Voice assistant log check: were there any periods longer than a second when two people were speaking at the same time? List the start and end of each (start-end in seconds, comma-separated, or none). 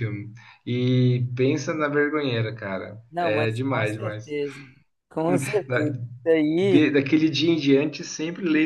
3.1-4.3